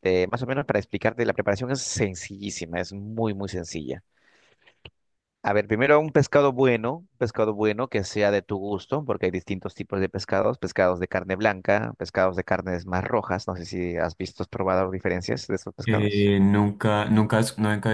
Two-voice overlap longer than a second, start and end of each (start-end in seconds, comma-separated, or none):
none